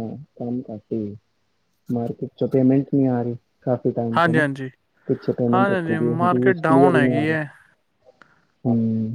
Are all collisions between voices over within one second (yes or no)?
no